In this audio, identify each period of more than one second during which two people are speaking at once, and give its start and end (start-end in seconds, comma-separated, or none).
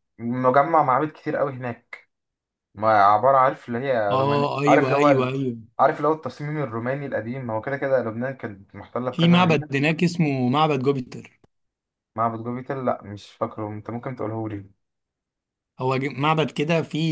4.1-5.3